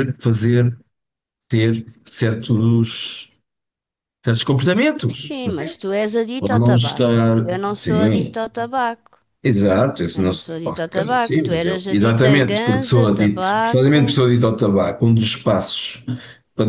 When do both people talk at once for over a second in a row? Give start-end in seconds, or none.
6.4-8.4, 10.2-14.0